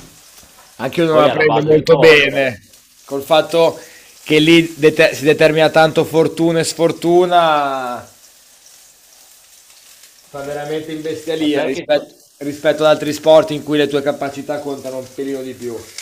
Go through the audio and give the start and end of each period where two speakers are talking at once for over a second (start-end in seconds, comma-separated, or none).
1.1-2.4